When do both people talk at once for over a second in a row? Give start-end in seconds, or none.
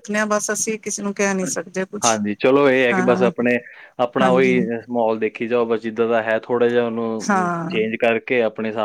none